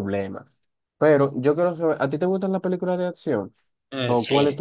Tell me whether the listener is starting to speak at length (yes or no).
yes